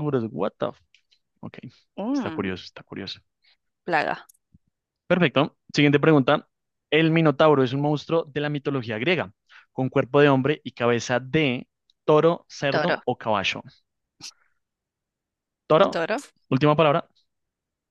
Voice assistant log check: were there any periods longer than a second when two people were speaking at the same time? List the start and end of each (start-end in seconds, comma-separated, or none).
none